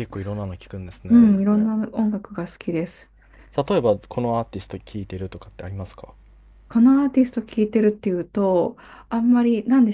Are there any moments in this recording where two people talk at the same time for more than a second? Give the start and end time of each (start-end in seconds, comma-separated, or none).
none